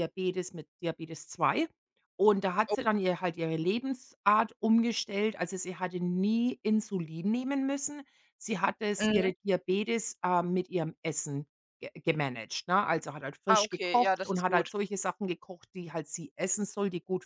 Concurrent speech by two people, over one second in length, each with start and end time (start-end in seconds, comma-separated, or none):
13.5-14.7